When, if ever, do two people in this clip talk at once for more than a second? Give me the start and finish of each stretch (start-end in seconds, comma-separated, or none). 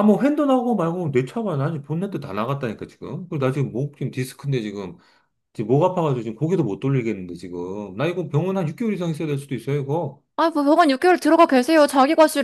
none